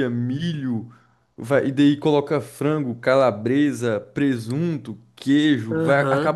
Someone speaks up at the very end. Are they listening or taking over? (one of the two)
listening